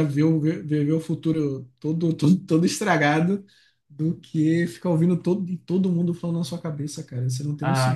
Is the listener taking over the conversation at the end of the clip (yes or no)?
yes